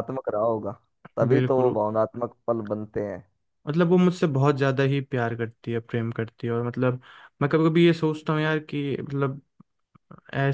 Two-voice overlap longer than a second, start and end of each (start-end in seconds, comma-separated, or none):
none